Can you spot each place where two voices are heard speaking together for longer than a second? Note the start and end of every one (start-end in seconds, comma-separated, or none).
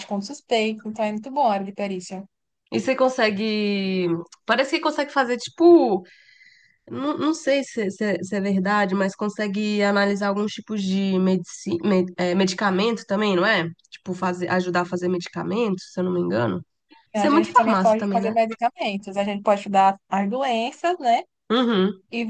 17.1-18.3